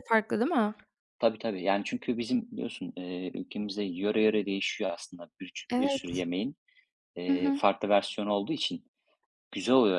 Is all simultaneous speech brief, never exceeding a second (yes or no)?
yes